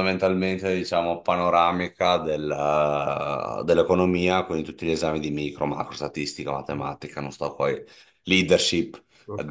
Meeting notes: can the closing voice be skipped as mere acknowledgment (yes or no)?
no